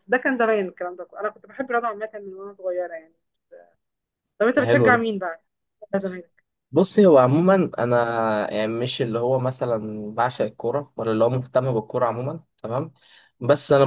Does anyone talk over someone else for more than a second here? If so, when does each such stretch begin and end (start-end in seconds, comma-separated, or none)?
none